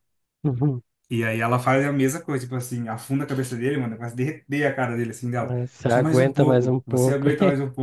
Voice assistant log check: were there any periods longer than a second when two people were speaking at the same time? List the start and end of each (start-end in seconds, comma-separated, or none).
5.4-7.3